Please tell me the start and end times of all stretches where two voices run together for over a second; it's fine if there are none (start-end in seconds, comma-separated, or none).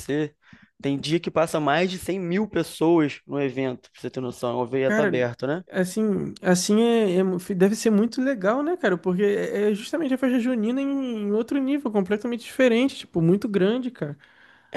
none